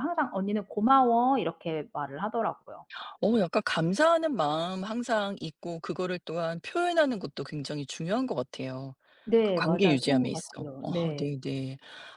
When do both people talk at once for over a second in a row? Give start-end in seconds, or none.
9.4-11.3